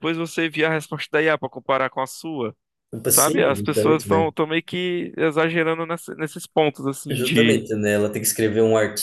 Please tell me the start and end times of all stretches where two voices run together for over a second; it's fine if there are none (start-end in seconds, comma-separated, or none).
3.1-4.3